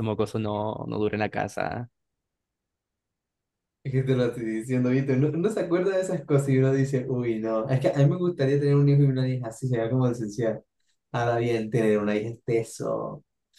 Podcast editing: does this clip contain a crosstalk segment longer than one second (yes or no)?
no